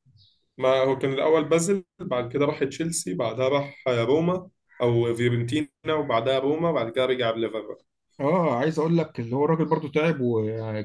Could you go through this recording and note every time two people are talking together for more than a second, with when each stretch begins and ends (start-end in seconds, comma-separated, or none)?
none